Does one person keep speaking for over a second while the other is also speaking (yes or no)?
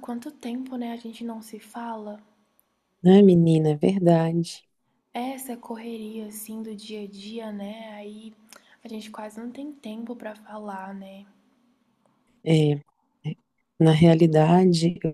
no